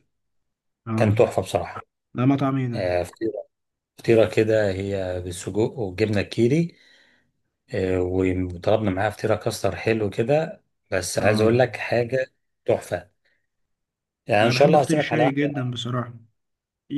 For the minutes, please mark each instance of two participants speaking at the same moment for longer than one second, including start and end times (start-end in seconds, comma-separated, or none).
14.4-15.6